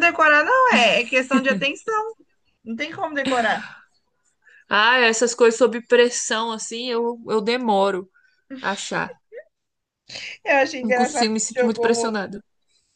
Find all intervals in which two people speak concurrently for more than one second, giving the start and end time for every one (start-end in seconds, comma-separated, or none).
10.8-12.1